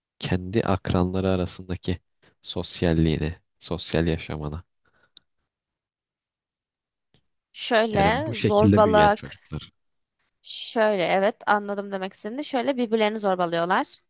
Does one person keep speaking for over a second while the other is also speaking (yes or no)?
yes